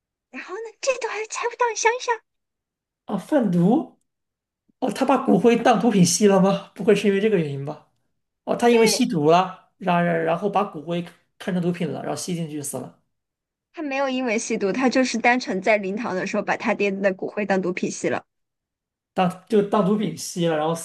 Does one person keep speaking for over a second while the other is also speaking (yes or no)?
no